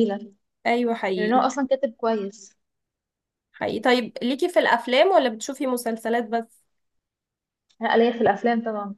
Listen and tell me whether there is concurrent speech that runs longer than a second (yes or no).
no